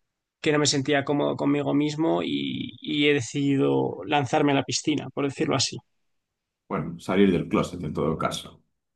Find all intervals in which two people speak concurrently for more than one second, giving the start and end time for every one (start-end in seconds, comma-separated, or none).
none